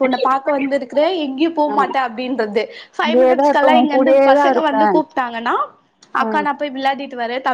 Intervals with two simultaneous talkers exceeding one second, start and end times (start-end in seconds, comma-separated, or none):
3.1-4.7